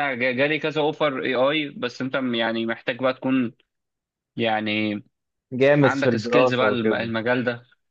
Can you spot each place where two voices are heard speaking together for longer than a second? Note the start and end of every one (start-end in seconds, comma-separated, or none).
5.8-7.1